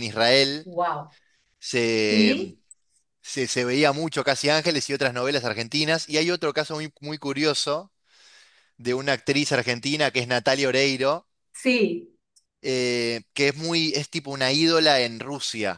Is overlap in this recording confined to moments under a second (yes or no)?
yes